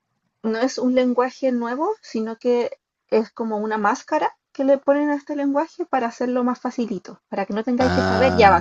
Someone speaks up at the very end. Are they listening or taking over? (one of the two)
taking over